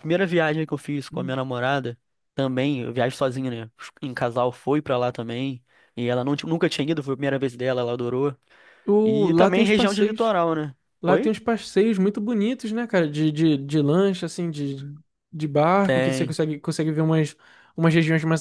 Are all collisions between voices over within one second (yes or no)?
no